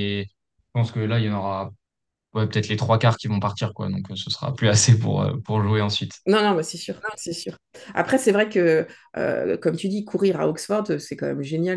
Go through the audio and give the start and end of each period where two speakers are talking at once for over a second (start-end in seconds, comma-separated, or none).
none